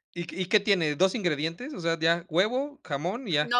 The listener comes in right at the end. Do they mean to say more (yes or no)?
yes